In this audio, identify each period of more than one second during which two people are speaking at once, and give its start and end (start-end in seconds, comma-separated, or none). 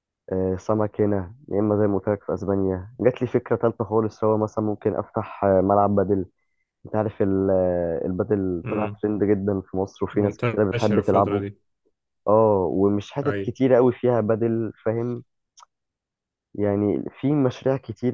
10.1-11.4